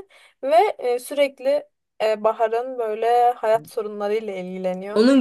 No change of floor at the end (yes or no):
no